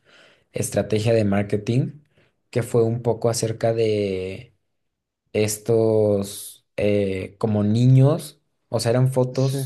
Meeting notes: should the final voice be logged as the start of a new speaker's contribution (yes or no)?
no